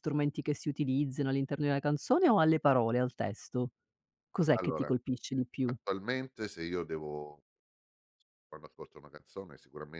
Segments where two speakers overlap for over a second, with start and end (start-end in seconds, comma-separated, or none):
none